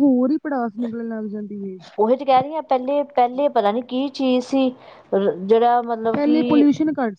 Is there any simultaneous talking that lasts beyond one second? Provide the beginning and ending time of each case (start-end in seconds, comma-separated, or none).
none